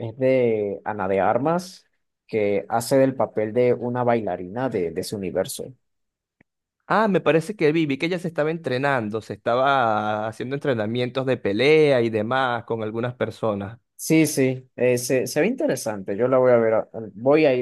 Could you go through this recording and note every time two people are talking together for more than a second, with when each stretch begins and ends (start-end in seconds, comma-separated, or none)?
none